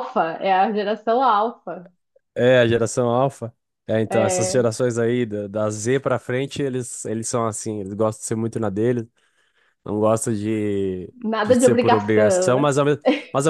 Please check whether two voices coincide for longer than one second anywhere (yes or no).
yes